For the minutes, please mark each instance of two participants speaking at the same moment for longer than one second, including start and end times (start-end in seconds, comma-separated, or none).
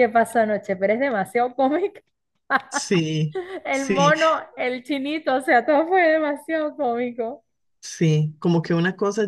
none